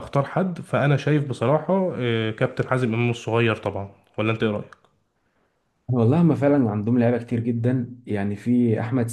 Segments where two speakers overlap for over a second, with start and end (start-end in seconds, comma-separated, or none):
none